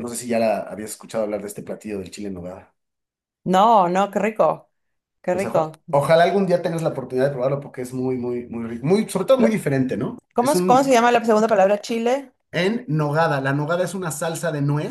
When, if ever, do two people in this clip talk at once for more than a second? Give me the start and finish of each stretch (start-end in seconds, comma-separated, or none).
none